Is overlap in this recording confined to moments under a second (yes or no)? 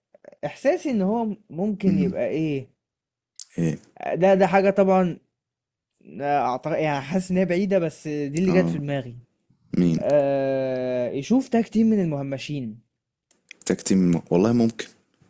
yes